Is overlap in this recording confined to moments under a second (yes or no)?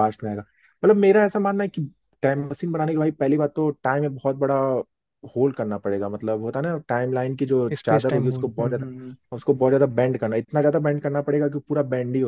no